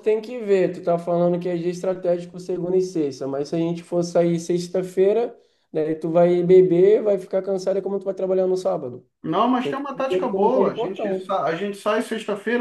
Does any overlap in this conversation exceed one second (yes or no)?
yes